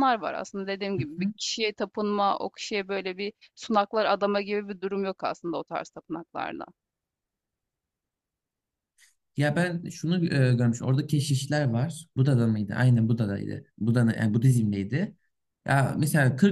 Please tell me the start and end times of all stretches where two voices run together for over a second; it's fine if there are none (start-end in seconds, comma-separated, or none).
none